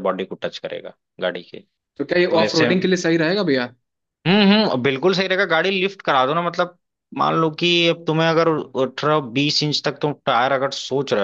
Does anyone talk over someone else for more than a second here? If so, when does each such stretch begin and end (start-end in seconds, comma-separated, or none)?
none